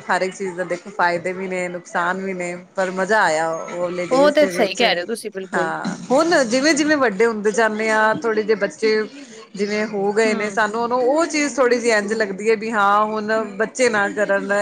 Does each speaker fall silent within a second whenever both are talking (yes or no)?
yes